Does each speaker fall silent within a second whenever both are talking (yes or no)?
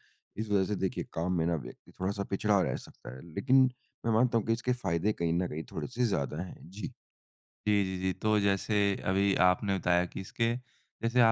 yes